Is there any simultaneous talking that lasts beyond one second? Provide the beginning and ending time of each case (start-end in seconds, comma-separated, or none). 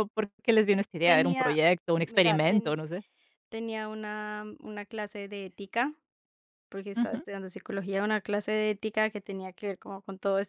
1.1-2.8